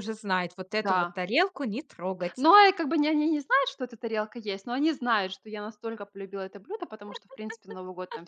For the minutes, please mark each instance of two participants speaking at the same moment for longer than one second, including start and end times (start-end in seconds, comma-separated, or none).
none